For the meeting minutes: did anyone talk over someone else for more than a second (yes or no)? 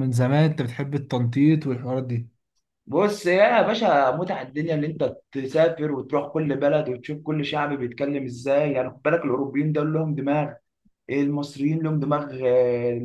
no